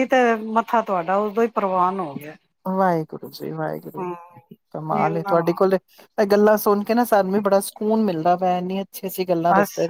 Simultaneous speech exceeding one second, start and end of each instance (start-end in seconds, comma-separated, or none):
none